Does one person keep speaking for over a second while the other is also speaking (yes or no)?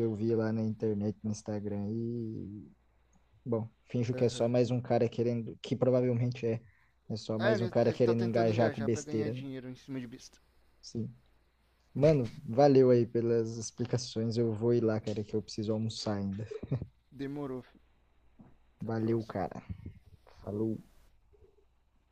yes